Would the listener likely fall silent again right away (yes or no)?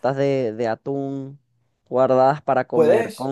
yes